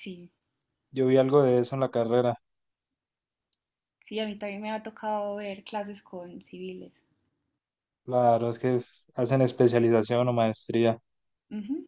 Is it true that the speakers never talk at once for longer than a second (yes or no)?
yes